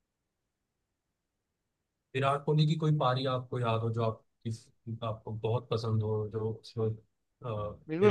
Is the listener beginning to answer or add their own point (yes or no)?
yes